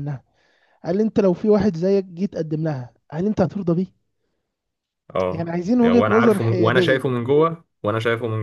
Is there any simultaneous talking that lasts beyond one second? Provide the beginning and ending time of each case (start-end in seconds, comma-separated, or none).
5.3-7.0